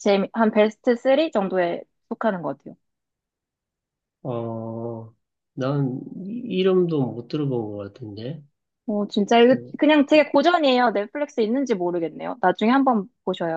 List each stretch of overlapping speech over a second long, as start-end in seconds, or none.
none